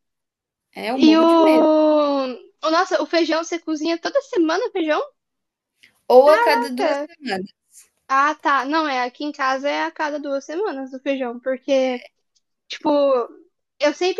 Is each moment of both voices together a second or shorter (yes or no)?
yes